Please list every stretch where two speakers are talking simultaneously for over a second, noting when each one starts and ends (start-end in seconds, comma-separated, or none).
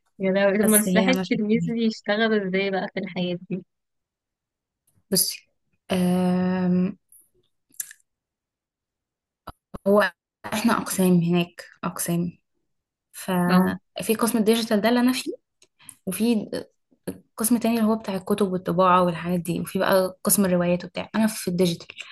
0.5-1.9